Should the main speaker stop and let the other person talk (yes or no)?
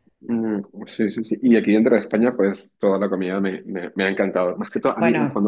no